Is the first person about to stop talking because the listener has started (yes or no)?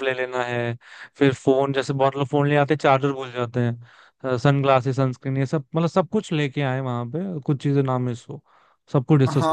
yes